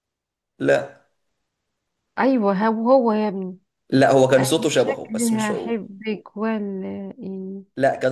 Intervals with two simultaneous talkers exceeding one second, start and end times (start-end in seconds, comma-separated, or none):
4.4-5.7